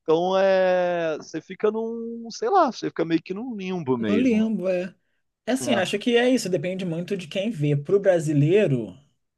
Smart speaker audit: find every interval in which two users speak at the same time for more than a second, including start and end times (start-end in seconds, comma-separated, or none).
none